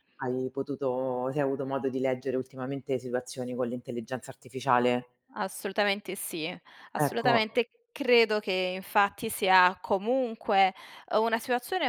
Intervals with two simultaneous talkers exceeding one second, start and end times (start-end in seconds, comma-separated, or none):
none